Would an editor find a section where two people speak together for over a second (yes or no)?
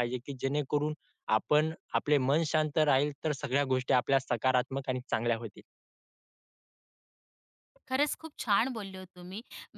no